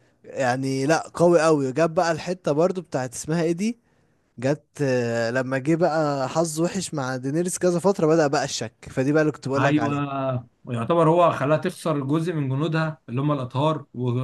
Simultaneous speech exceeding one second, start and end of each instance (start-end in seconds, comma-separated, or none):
none